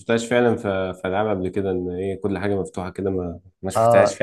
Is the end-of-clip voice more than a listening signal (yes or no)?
yes